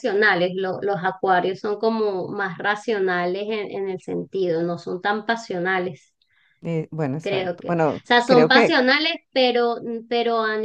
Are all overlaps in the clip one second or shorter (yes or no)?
no